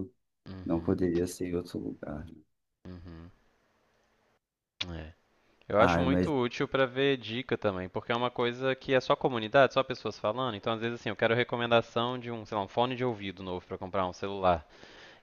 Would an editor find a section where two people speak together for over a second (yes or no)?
no